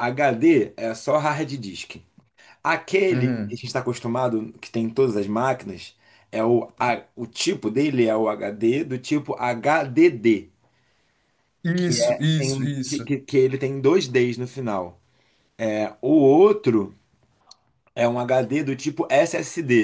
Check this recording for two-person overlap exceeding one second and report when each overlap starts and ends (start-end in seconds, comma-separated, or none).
11.8-13.1